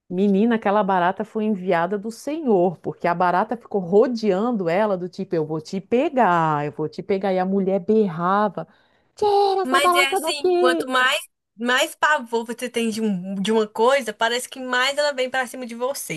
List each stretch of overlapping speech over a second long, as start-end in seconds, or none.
9.6-10.9